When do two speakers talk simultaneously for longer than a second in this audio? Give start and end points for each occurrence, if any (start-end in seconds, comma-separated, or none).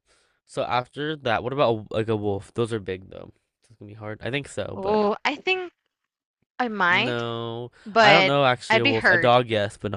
7.9-9.4